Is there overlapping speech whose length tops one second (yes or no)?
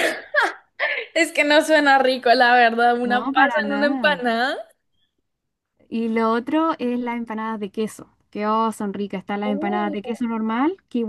yes